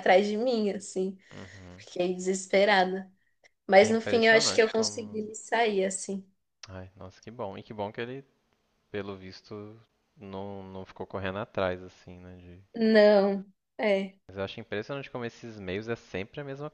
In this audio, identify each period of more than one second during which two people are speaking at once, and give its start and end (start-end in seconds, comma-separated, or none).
3.8-5.2